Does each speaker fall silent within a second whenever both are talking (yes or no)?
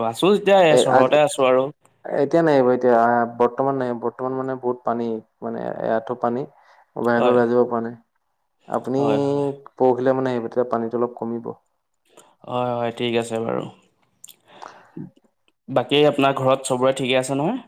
yes